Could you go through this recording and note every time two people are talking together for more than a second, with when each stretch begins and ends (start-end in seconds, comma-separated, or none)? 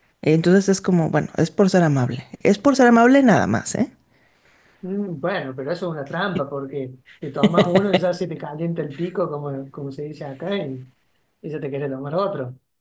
none